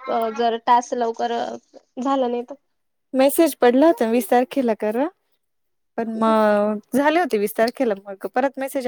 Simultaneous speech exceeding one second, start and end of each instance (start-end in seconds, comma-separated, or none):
none